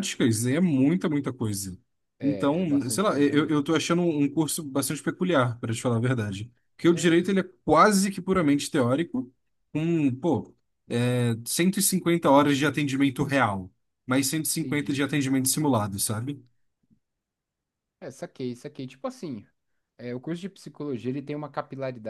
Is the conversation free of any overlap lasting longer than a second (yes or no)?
no